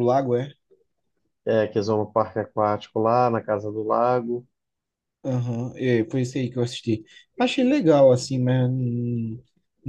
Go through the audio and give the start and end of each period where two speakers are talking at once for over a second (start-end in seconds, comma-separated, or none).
none